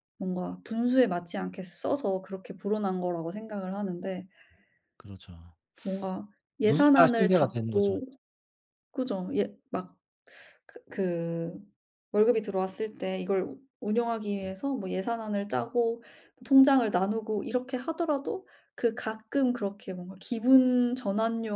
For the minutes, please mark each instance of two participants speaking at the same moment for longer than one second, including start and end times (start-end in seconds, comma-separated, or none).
6.6-7.9